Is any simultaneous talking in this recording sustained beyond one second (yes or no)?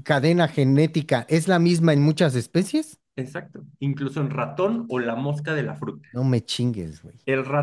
no